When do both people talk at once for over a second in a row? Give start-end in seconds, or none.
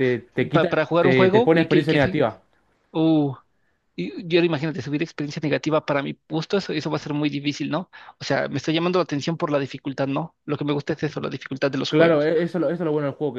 0.5-2.2